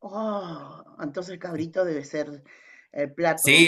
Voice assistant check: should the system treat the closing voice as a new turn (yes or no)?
yes